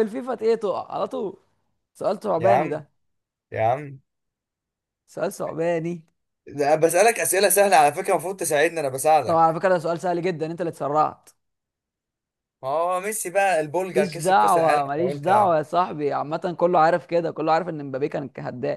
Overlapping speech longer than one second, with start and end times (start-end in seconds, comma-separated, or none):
13.9-15.6